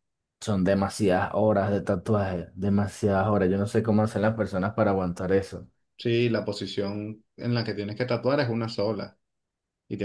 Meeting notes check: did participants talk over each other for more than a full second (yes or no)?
no